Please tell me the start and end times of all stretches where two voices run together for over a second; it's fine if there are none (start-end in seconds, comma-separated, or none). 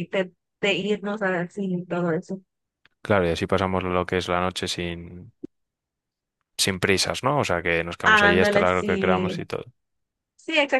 8.0-9.4